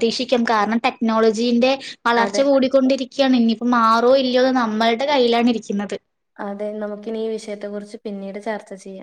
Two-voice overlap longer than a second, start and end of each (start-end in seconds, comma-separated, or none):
none